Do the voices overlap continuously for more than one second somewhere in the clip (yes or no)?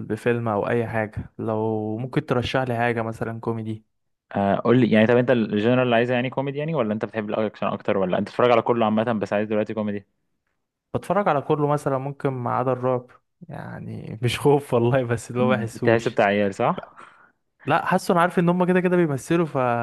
no